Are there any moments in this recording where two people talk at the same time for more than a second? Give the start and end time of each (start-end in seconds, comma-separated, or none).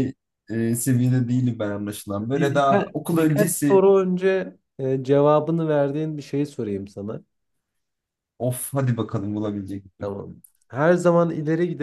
2.2-3.8